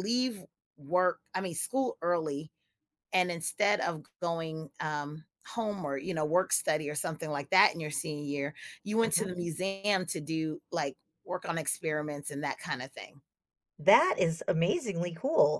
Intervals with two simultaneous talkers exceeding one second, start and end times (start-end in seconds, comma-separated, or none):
none